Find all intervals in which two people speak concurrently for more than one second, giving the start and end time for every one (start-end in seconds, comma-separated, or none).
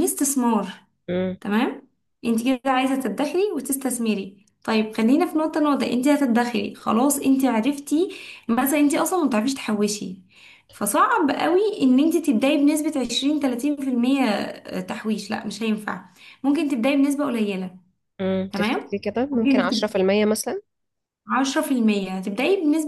18.5-20.0